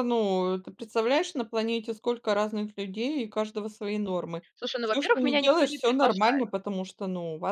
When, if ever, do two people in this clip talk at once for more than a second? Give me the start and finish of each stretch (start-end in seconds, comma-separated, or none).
4.8-6.5